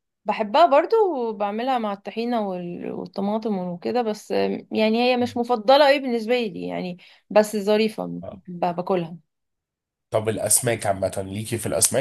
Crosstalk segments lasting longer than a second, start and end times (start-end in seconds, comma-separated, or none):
none